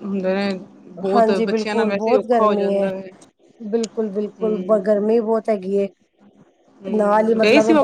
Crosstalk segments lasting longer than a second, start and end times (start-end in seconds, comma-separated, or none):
1.1-2.9